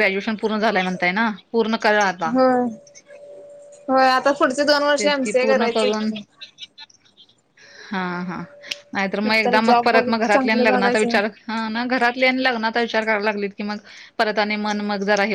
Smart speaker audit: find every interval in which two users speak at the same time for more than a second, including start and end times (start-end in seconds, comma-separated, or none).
9.3-11.2